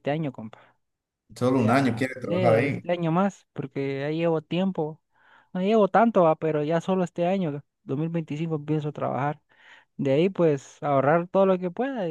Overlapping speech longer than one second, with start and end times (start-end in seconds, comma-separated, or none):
1.5-2.9